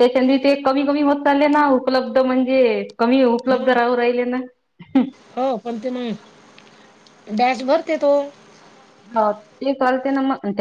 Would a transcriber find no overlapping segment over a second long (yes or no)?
yes